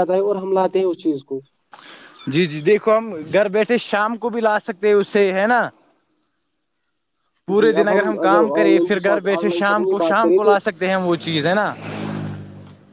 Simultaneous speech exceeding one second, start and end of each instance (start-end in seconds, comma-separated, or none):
8.6-10.5